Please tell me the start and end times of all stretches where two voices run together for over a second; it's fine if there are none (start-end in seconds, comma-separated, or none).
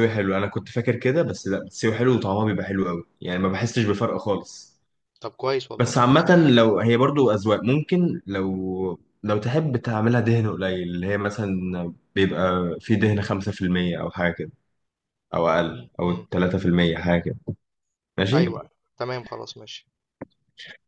none